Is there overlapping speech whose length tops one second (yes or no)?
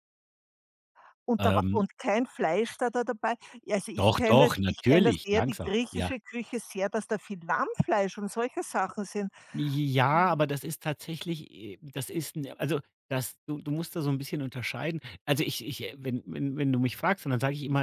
yes